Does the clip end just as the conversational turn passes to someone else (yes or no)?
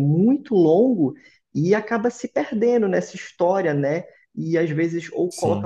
no